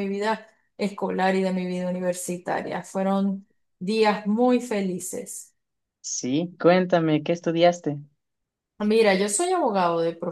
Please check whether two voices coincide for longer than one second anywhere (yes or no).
no